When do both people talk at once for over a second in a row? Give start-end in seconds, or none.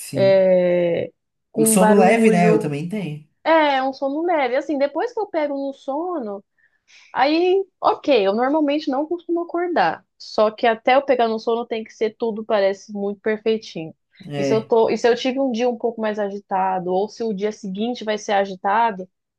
1.5-2.8